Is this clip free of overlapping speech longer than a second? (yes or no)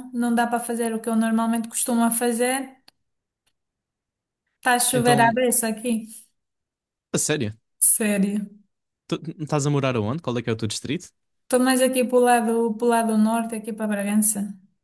yes